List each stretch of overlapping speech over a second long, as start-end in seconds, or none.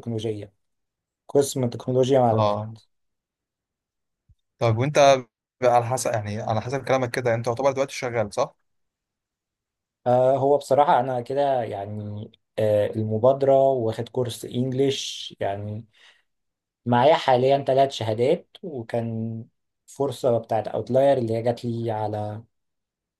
none